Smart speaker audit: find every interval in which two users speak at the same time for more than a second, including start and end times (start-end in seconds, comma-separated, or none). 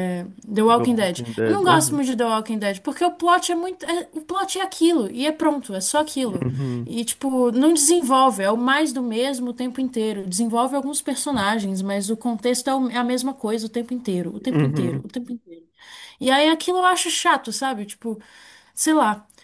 0.7-2.0